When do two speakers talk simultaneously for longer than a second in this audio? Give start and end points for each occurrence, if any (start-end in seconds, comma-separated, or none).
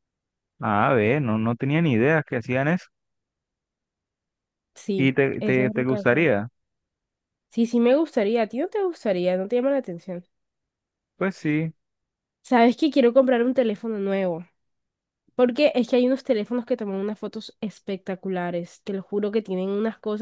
5.0-6.3